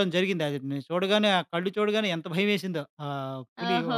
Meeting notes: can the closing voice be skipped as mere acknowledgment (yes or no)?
no